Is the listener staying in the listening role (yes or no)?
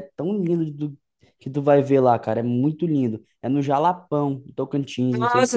no